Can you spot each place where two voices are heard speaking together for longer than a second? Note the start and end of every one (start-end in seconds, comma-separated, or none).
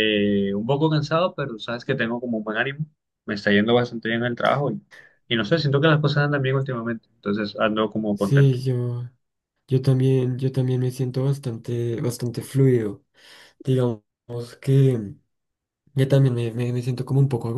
none